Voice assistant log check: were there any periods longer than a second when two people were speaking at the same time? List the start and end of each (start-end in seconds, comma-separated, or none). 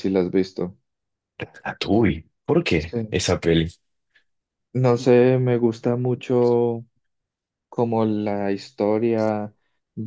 none